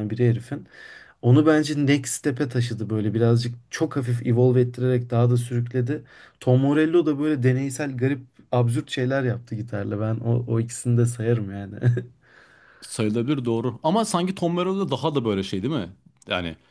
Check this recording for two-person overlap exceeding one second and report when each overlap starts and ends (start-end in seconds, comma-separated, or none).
none